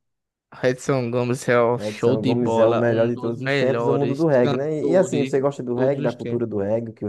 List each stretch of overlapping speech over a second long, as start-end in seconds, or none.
1.7-6.4